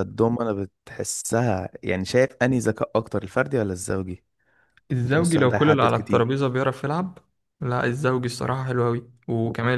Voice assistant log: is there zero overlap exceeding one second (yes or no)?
no